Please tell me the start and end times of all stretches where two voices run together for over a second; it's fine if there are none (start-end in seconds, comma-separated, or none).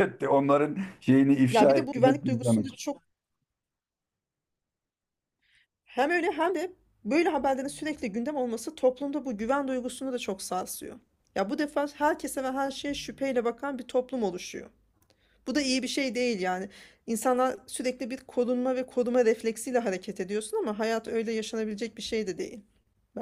1.5-2.8